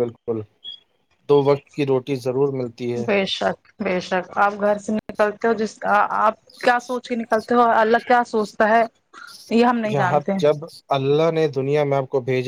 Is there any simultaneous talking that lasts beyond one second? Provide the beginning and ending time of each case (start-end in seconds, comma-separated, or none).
none